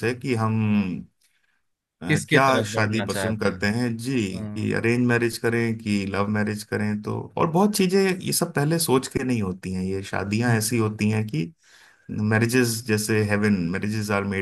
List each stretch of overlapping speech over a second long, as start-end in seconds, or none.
2.1-3.7